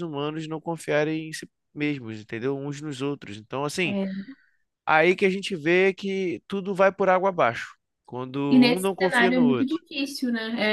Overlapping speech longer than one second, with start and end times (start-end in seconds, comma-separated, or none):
8.5-9.8